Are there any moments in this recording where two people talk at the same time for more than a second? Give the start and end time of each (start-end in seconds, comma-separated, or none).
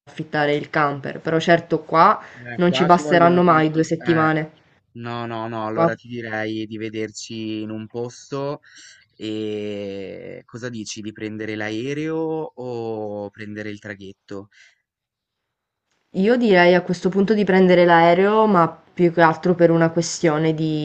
2.5-4.3